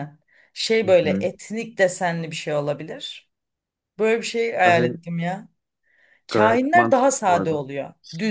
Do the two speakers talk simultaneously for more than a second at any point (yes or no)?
yes